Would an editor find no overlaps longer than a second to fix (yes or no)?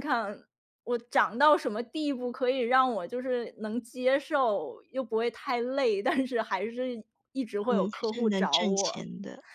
no